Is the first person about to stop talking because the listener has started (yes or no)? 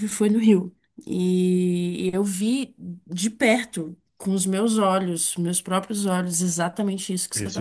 no